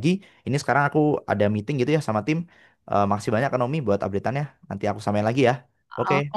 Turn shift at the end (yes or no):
yes